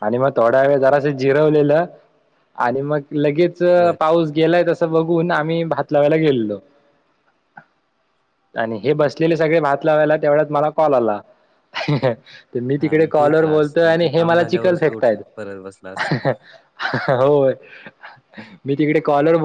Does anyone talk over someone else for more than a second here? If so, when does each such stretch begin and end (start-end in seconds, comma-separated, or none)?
12.8-15.2